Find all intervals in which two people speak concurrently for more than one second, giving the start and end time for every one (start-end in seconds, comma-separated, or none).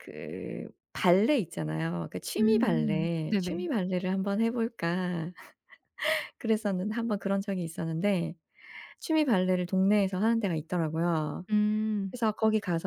2.4-3.7